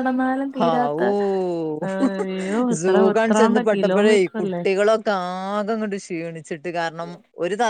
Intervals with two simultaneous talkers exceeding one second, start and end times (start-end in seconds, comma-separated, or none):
2.8-4.6